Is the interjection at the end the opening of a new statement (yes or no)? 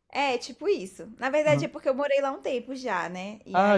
yes